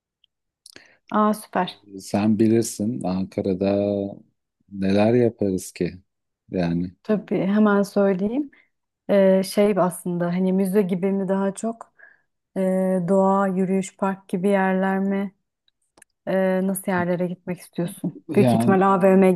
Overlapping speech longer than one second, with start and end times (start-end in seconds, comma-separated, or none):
none